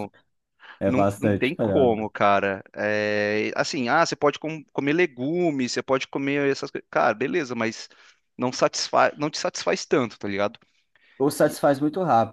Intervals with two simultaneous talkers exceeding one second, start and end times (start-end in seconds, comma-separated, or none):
0.9-2.1